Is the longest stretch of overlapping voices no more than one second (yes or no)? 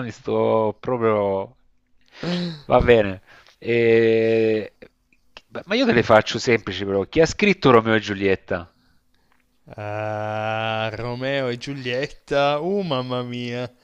yes